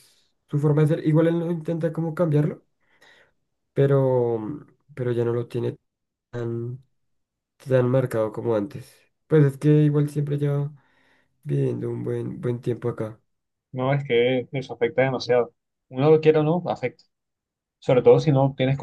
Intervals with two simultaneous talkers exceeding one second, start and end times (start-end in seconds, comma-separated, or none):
none